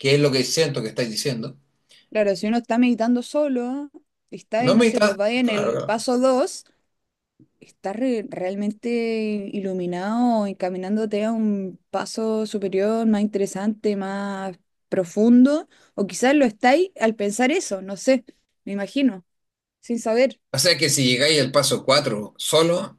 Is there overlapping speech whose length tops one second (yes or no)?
yes